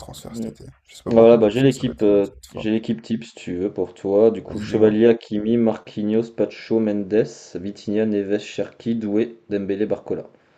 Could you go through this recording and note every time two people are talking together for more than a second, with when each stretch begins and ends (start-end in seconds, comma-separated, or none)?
1.1-2.7